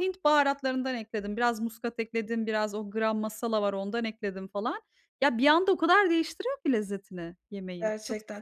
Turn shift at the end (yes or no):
yes